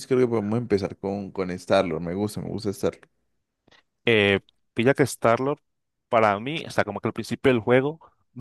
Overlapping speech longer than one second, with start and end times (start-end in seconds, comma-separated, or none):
none